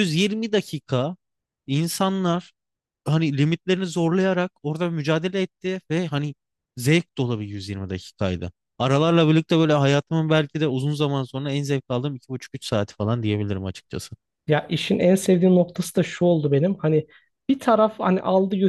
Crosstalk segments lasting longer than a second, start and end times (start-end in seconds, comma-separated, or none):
none